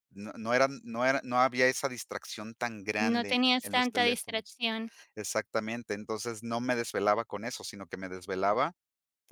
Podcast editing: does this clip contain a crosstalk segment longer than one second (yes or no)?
yes